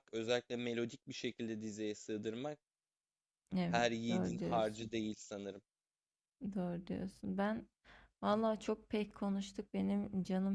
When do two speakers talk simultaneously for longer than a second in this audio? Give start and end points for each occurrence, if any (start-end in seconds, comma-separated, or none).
3.6-4.9